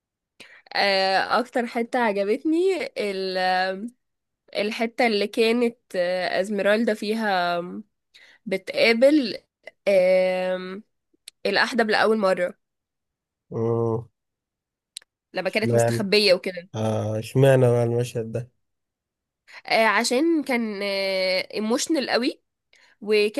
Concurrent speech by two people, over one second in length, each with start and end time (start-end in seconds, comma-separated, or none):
none